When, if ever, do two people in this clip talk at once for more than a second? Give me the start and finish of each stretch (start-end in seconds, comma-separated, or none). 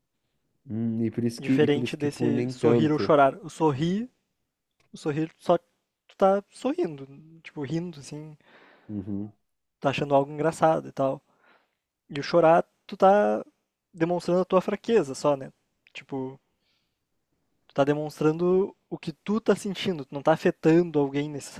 1.4-3.1